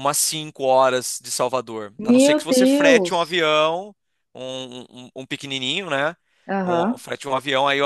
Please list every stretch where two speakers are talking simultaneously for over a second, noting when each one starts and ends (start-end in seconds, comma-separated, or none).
2.0-3.4